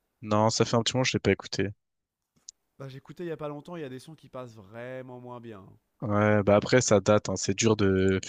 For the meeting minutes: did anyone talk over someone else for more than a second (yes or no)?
no